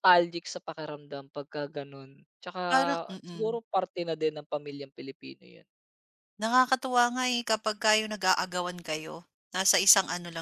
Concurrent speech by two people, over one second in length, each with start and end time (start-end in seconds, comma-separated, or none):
none